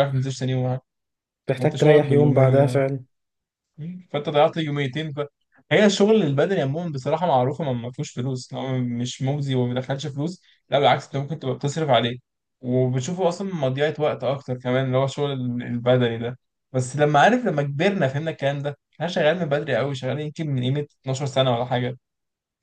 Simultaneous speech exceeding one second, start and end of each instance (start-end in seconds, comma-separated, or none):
1.6-2.8